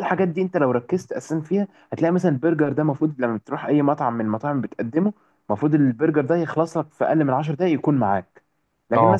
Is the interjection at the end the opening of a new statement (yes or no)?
no